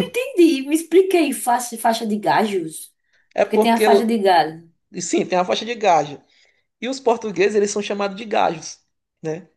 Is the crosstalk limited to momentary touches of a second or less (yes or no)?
yes